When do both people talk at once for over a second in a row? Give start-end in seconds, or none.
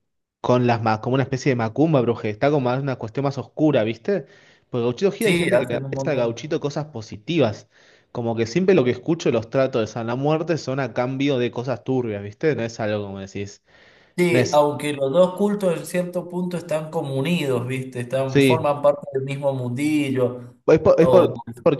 5.2-6.5